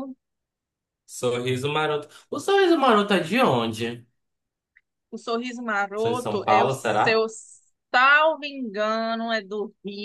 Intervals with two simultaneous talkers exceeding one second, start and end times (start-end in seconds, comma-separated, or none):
6.0-7.2